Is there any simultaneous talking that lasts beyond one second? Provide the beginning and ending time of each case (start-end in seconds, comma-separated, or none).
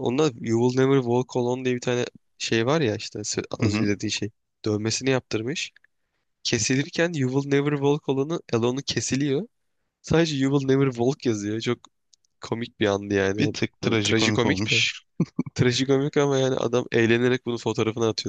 13.4-14.8